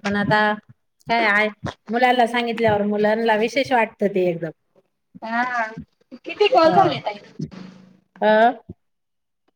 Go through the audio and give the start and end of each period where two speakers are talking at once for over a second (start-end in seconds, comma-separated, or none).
none